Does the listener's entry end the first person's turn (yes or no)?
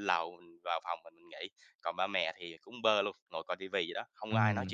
yes